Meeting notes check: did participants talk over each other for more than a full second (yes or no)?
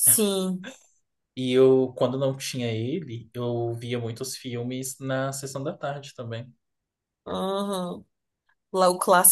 no